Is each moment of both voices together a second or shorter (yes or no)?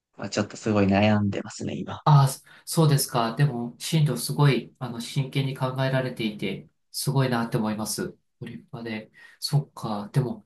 yes